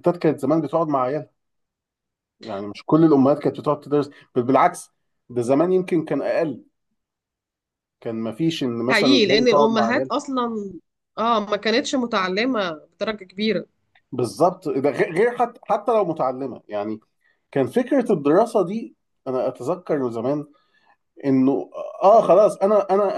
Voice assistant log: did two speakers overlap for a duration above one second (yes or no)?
yes